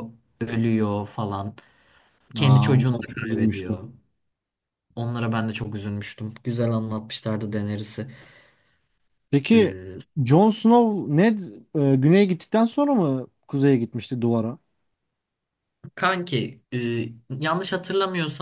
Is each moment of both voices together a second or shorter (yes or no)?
no